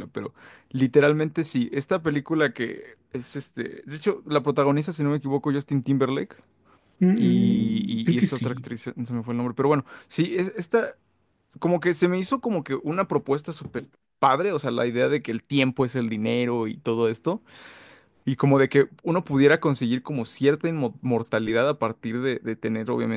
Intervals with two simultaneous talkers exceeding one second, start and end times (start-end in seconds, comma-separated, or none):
7.1-8.7